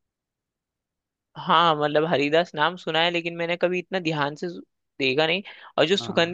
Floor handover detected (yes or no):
no